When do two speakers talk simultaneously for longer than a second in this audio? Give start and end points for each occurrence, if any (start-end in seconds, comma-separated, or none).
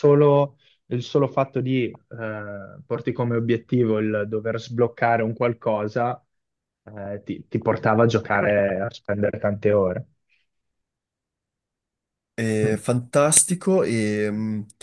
none